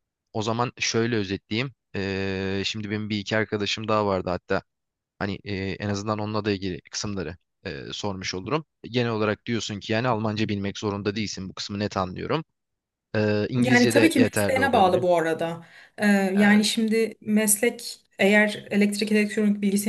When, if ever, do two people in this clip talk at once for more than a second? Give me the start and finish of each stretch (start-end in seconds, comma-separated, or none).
13.6-15.0